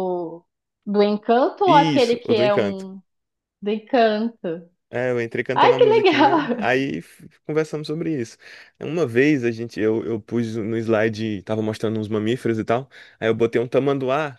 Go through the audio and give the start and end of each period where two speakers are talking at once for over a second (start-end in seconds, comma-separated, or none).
1.6-2.9, 5.5-6.8